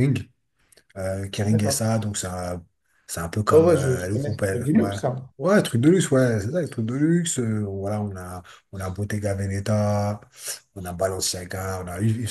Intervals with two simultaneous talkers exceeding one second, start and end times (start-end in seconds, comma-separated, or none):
3.5-5.0